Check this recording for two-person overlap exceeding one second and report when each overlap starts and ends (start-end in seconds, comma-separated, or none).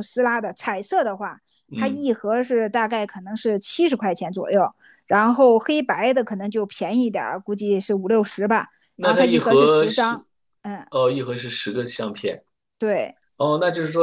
8.9-10.2